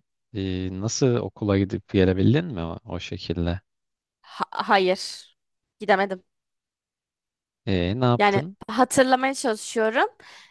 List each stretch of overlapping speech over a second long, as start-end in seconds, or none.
none